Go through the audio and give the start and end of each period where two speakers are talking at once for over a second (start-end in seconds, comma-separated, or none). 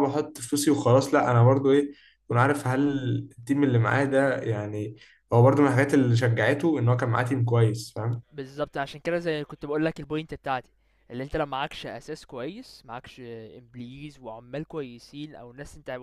none